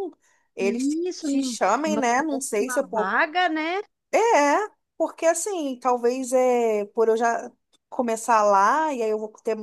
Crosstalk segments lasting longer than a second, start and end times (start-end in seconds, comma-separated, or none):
0.6-2.9